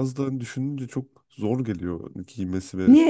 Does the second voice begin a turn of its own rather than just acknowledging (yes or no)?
yes